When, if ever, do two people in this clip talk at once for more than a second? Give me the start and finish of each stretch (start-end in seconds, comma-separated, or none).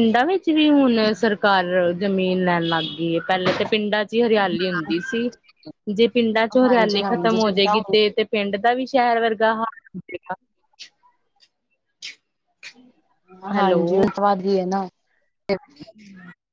6.7-8.1